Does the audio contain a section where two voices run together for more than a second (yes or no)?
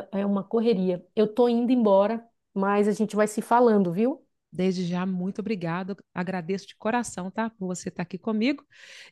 no